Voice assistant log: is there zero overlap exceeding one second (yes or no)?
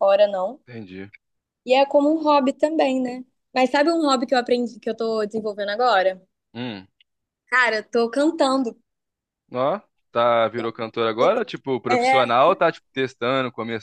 yes